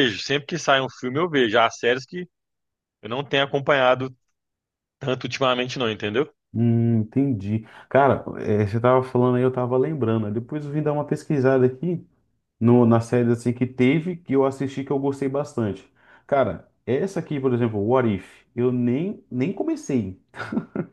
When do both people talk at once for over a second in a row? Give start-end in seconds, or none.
none